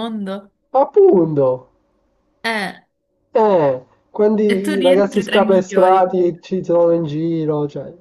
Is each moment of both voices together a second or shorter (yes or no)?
no